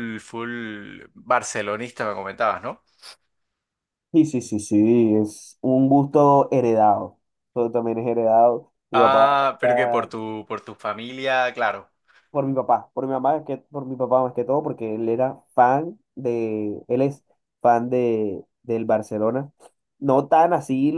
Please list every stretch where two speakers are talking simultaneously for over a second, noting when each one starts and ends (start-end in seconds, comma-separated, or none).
none